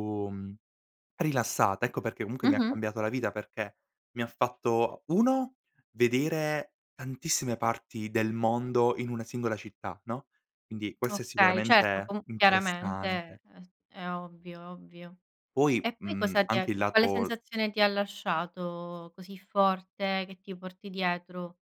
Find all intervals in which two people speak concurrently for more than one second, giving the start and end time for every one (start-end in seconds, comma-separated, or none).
11.0-13.4, 15.8-17.4